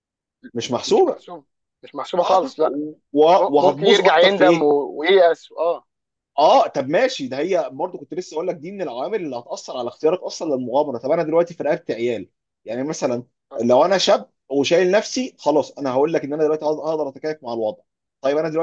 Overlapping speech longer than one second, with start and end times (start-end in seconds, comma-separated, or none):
3.4-4.7